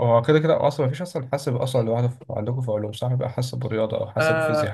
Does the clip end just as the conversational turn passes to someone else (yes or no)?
yes